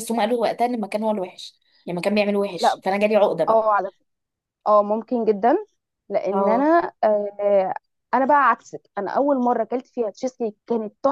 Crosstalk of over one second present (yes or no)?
no